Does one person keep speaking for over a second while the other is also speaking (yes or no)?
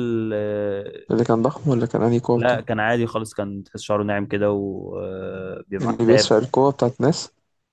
no